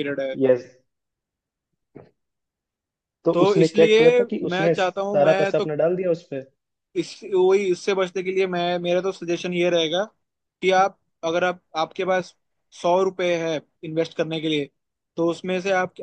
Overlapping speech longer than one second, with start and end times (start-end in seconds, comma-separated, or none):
3.3-5.7